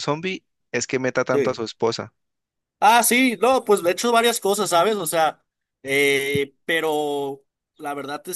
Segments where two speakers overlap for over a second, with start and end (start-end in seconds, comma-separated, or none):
none